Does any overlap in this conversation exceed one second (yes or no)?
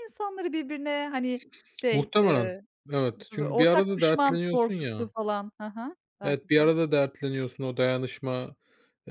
yes